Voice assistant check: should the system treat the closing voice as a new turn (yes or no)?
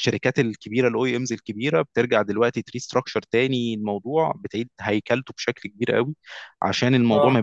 no